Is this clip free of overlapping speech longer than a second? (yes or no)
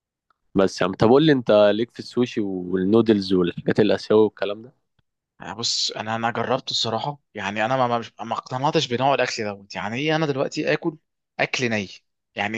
yes